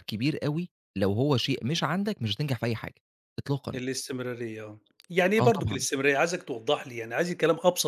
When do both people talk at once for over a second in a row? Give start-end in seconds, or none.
none